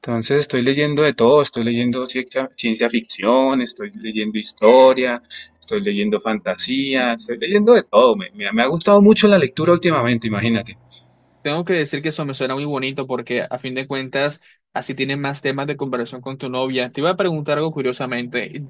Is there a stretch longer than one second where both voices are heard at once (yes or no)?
no